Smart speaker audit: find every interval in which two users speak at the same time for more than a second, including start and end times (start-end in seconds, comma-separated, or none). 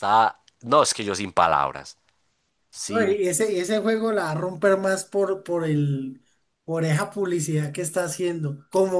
none